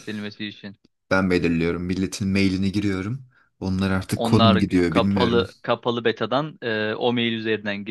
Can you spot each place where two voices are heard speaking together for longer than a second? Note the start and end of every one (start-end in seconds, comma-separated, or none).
4.2-5.5